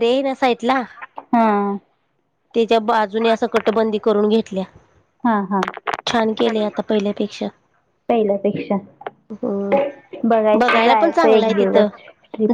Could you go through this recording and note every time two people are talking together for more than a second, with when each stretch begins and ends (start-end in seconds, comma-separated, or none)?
10.6-11.9